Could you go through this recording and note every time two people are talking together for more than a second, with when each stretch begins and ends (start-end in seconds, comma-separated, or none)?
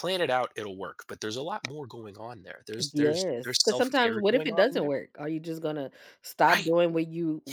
2.9-4.9